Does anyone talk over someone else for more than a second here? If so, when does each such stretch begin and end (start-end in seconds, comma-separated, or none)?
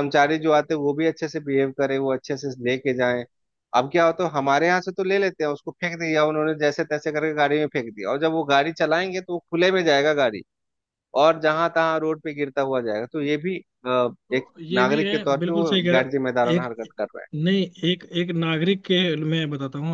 14.3-16.7